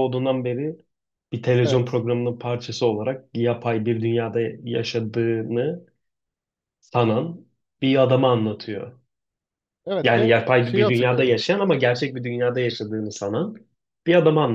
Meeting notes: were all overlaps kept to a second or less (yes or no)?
no